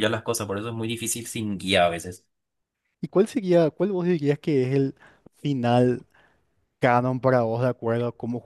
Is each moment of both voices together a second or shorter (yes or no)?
yes